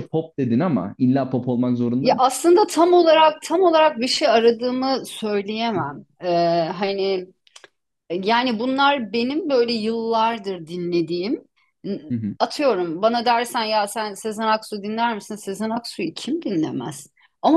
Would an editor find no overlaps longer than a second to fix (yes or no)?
yes